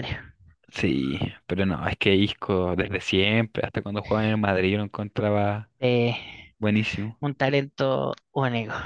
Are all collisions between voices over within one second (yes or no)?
yes